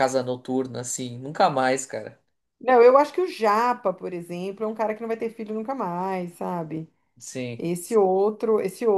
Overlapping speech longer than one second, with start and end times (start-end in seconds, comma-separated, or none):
none